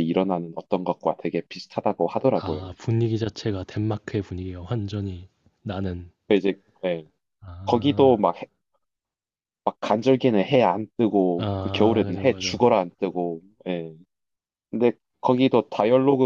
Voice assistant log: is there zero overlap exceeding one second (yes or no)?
no